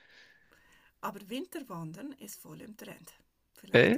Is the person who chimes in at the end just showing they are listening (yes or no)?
yes